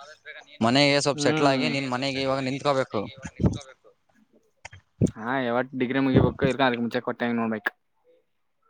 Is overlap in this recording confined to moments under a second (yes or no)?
no